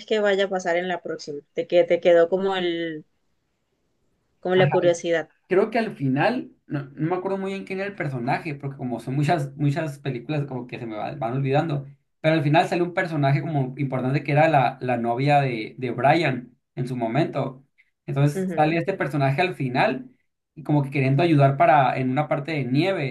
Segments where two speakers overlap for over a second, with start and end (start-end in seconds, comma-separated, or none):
none